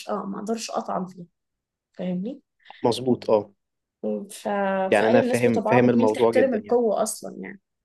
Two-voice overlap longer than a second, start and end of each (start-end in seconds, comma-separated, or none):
5.0-6.8